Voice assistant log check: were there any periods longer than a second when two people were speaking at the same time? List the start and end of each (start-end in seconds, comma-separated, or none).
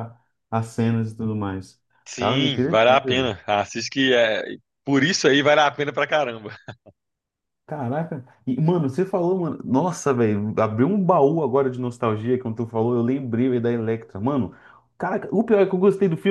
2.0-3.3